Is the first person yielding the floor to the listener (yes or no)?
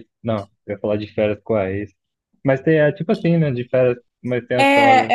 yes